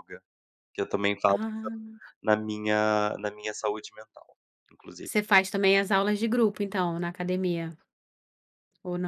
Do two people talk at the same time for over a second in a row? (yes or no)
no